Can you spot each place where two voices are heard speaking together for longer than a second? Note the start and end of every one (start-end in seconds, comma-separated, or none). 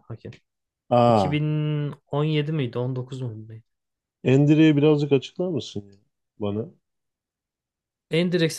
none